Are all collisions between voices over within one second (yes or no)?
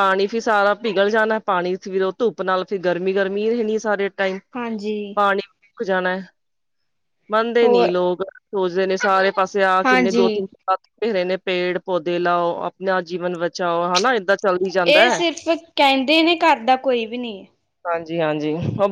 yes